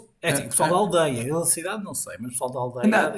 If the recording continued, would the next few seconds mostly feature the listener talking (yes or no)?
yes